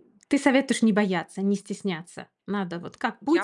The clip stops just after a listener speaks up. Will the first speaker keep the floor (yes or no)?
no